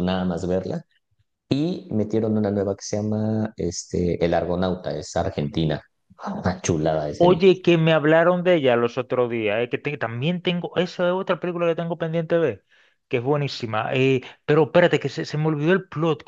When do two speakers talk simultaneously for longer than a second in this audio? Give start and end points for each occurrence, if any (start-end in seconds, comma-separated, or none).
none